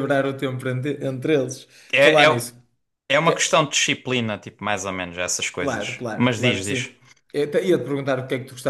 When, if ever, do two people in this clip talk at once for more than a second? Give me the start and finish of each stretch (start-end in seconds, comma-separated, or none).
5.6-6.9